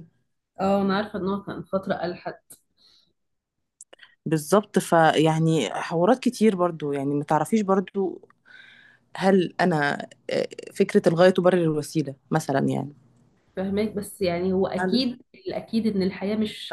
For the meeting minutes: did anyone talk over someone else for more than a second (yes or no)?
no